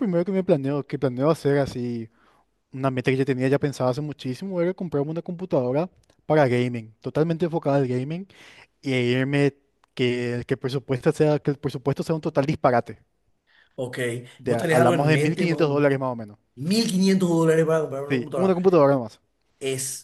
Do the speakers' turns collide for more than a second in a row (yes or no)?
yes